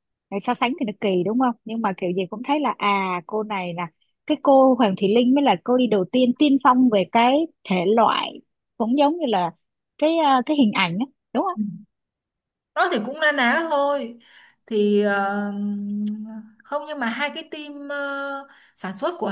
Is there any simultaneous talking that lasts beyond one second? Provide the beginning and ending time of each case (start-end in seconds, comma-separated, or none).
none